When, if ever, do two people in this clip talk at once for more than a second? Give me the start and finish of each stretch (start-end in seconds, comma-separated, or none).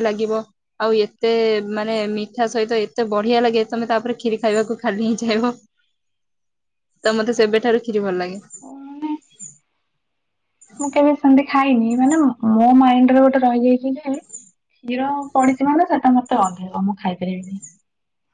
none